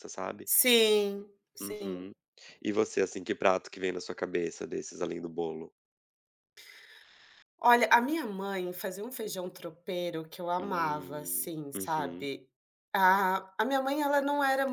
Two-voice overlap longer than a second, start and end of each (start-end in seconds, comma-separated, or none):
10.6-12.3